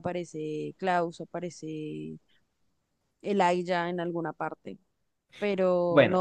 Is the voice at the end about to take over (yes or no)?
no